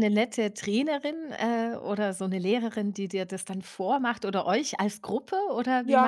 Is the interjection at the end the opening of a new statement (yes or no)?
yes